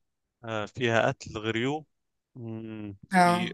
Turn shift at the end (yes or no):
no